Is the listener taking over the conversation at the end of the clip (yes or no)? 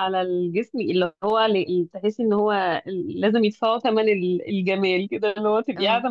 no